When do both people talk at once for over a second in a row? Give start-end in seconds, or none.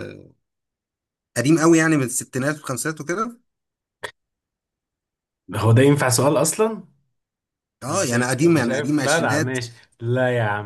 7.9-9.6